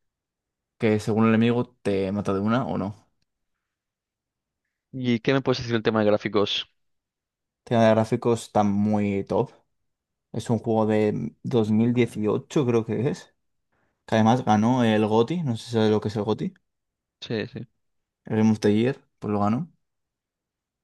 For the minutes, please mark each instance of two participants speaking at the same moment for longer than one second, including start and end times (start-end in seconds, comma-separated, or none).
none